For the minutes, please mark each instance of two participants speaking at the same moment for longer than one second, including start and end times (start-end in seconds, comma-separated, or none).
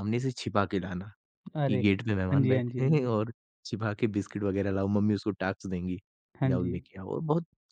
1.7-3.1